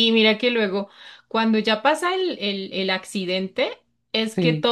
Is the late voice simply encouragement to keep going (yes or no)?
yes